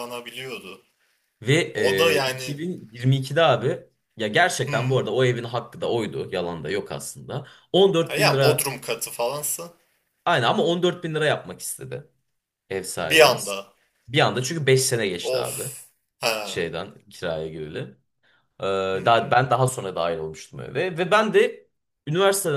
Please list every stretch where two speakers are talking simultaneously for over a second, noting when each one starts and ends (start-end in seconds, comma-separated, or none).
none